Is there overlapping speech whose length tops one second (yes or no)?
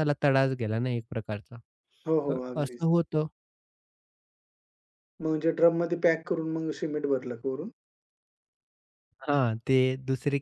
no